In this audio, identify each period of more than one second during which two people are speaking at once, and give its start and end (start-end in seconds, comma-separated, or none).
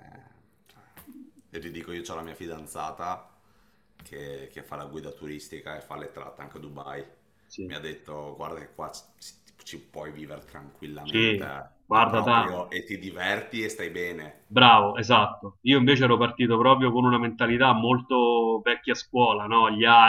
11.0-12.6